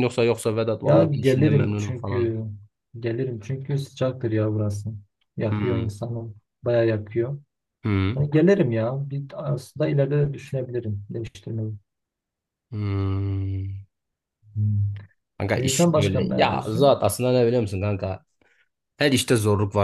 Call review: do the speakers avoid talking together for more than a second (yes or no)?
no